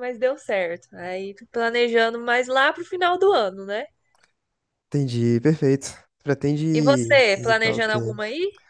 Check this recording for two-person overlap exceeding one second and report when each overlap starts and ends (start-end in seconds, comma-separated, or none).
6.7-8.2